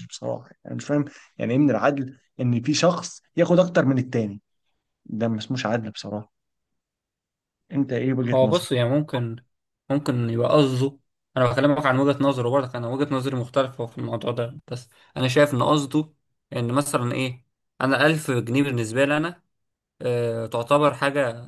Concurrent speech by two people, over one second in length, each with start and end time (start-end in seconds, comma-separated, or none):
none